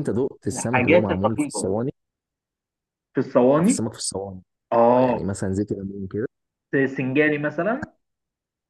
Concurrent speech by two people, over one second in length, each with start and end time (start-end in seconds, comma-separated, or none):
0.5-1.7